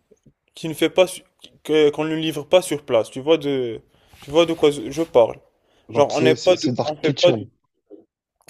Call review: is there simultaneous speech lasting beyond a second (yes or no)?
yes